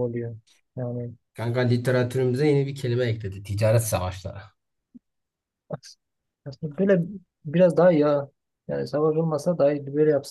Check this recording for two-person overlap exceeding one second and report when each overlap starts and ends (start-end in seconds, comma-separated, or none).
none